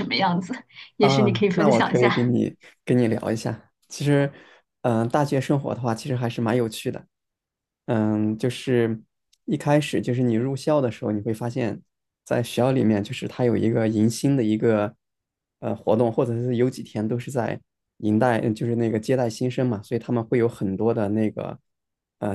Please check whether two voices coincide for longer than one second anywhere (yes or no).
yes